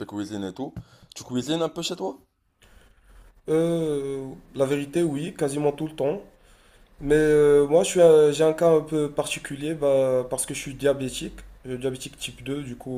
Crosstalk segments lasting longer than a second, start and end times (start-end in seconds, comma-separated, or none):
none